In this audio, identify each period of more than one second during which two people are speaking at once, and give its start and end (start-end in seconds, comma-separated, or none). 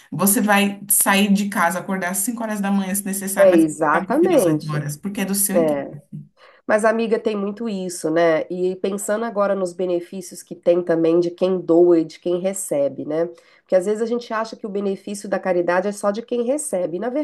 3.4-4.8